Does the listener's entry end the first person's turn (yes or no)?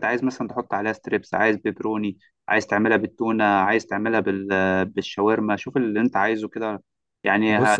no